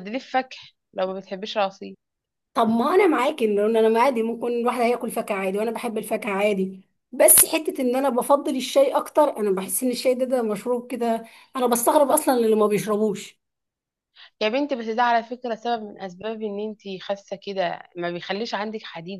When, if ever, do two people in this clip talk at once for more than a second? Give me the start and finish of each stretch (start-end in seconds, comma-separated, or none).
none